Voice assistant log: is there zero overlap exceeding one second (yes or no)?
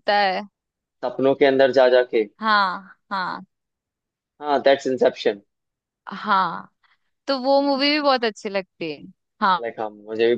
yes